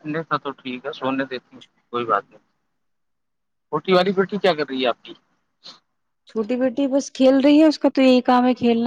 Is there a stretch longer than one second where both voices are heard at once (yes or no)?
no